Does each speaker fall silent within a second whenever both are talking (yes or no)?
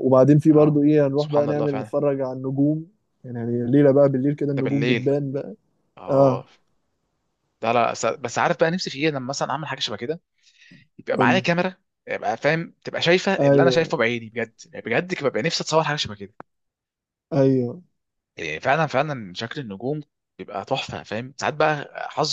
no